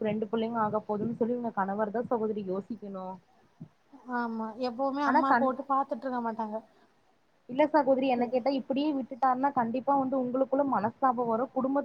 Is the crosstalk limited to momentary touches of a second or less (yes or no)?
yes